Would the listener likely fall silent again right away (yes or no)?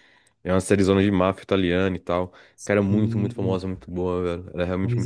yes